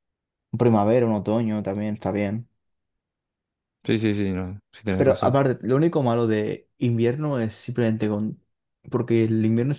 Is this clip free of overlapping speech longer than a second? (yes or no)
yes